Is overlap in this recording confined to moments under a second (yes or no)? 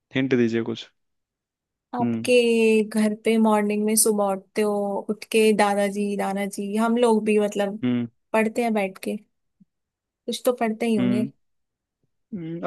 yes